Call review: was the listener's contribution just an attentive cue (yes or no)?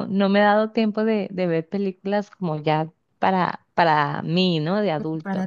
no